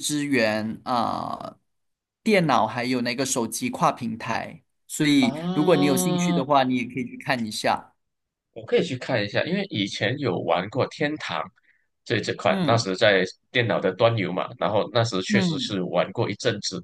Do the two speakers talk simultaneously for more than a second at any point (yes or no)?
yes